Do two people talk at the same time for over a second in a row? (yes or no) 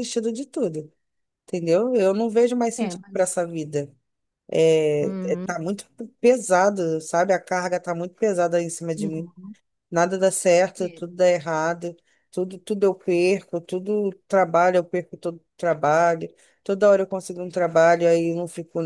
no